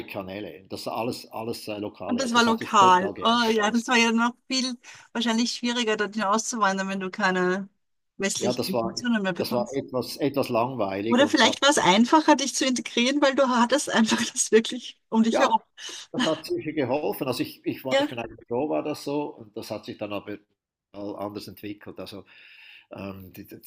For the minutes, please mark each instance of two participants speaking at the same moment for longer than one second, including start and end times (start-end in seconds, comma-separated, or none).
2.1-3.9, 8.4-9.8